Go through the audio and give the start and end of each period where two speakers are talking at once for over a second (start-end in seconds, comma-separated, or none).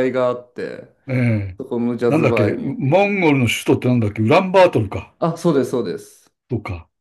2.1-3.5